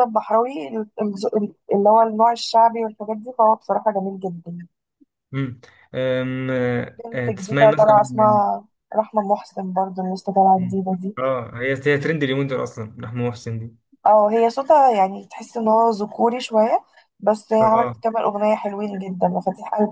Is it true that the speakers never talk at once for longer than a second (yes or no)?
no